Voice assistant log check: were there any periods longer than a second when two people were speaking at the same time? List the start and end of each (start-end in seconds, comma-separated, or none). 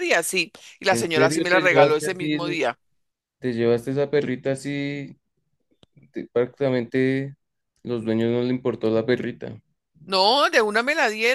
0.9-2.6